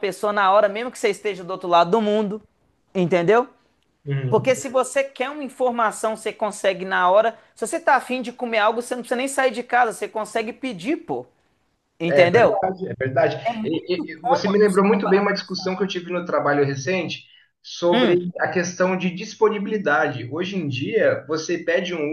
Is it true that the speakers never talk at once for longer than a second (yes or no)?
no